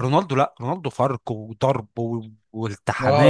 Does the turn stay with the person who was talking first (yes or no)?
no